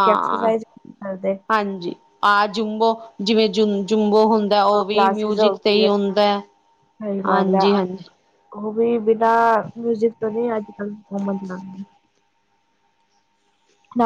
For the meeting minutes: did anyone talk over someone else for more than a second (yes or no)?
yes